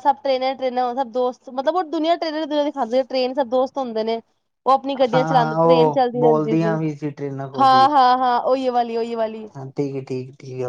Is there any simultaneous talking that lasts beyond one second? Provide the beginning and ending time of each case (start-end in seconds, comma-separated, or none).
5.1-6.8